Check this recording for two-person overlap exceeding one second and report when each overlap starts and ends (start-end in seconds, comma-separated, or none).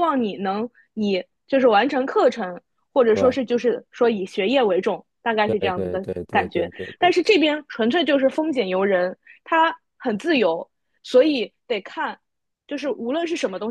5.5-7.2